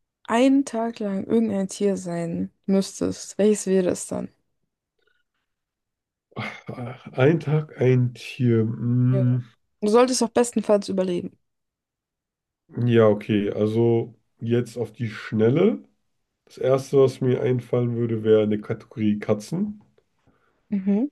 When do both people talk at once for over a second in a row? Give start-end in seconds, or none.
none